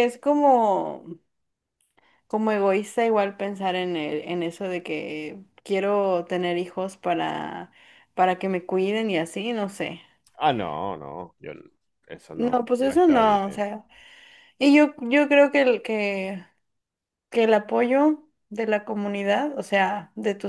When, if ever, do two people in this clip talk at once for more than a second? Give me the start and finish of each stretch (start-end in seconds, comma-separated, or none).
12.3-13.7